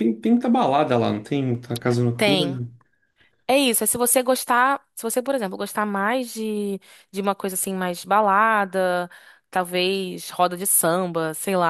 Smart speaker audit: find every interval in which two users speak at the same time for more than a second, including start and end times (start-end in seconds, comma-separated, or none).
none